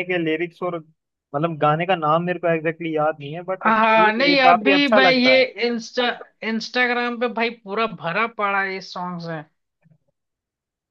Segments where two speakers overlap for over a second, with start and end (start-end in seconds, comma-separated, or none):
3.6-5.5